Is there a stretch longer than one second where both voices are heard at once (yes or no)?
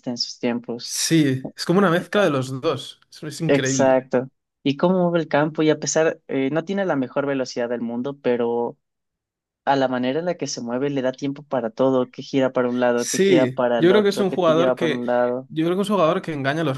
yes